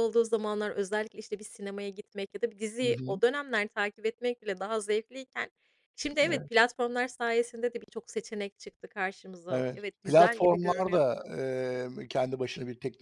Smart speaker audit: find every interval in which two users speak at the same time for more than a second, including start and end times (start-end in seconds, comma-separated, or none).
9.5-11.3